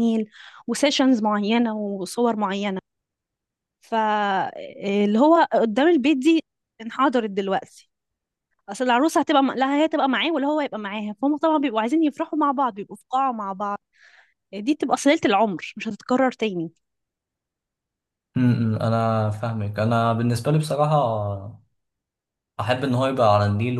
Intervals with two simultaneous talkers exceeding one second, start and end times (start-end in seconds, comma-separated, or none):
none